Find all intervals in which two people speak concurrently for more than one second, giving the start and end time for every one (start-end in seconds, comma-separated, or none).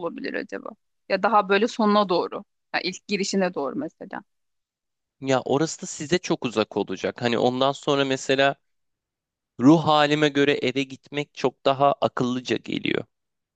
none